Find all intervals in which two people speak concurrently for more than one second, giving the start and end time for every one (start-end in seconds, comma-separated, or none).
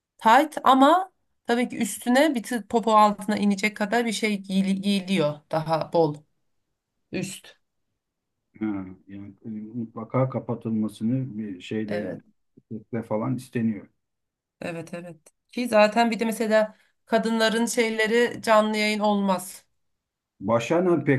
none